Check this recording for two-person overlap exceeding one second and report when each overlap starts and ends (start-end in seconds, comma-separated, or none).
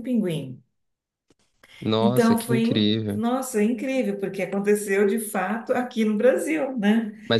2.0-3.2